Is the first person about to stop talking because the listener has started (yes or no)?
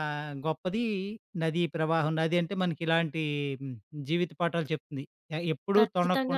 yes